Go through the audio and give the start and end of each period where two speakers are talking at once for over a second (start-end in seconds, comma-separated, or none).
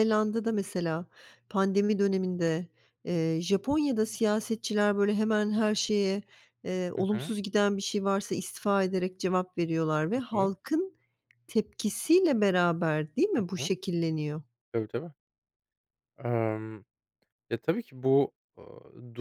none